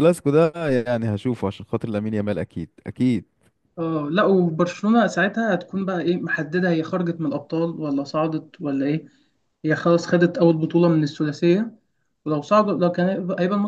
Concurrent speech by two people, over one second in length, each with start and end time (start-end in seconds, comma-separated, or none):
none